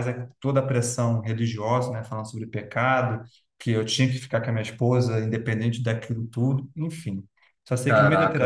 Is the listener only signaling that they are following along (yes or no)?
no